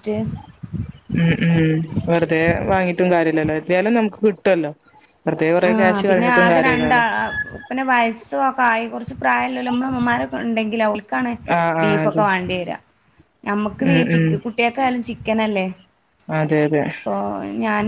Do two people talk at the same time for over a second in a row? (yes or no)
no